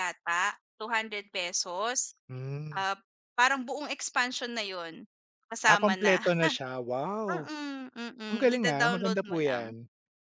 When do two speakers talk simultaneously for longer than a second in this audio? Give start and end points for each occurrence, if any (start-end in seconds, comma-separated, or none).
8.3-9.6